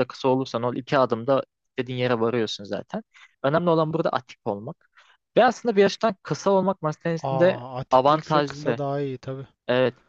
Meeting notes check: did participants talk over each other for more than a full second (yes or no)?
yes